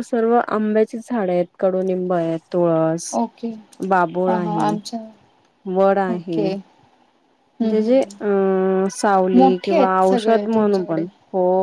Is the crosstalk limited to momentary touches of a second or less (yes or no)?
no